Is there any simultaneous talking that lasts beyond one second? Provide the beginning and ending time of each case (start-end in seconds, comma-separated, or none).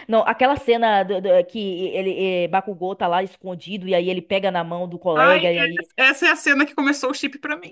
none